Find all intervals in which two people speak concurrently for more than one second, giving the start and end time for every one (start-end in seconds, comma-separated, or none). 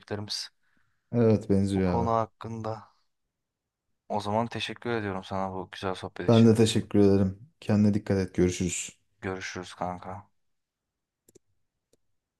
none